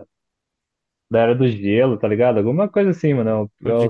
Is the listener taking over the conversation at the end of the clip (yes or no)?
no